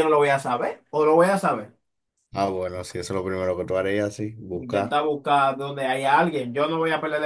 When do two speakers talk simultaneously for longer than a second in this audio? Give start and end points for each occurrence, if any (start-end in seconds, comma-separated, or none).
none